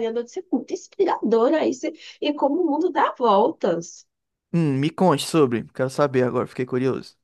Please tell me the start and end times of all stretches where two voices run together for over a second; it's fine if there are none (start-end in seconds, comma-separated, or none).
none